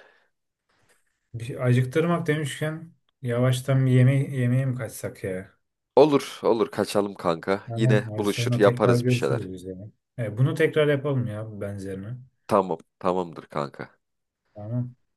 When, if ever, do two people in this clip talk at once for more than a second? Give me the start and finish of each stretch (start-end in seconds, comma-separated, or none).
7.7-9.5